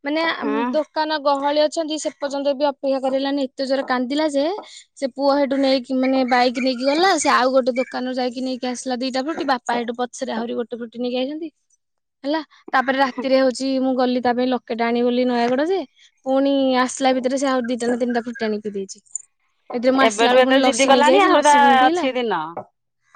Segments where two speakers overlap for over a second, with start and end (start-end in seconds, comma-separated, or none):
20.1-22.0